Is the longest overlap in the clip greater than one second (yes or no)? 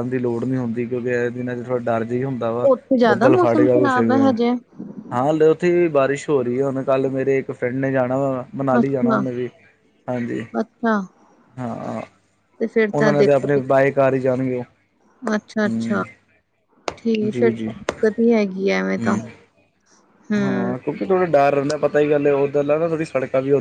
yes